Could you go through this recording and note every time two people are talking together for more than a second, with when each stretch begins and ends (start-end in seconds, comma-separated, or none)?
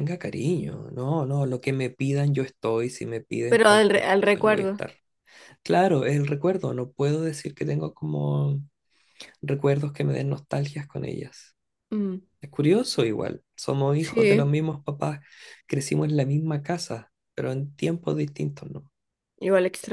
3.5-4.8